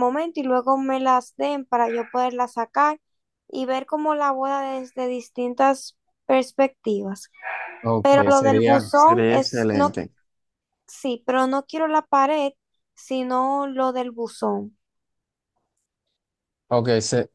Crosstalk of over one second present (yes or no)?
yes